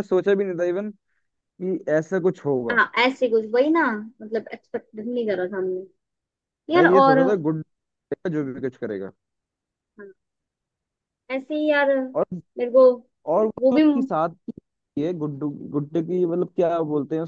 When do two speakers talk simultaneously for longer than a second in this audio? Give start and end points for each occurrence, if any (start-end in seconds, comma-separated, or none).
none